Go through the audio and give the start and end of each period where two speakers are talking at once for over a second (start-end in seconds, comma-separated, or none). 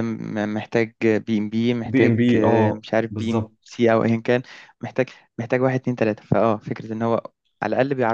1.8-3.5